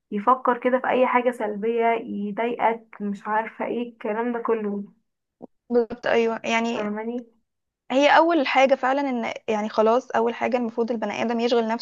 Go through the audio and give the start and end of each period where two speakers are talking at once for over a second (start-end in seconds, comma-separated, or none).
none